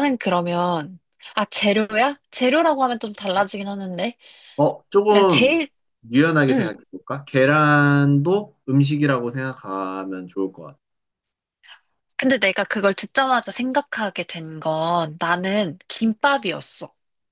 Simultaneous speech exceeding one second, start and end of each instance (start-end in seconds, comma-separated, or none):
none